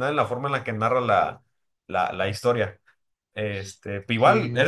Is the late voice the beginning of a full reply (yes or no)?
no